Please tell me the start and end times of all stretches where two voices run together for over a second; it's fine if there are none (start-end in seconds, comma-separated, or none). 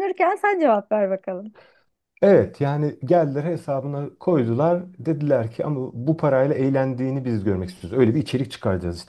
none